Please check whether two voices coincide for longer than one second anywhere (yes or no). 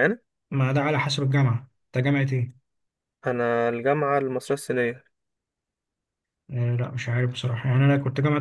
no